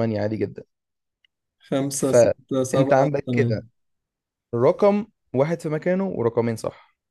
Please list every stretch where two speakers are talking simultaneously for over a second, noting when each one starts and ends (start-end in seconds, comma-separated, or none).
2.0-3.6